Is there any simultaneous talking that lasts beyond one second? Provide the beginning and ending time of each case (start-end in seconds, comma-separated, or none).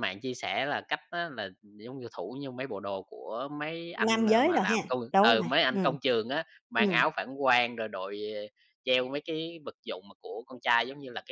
4.1-6.0